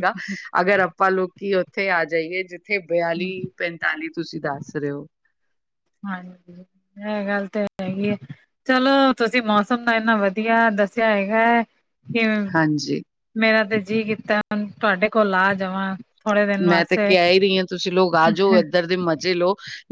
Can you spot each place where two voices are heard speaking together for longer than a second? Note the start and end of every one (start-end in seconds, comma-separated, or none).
none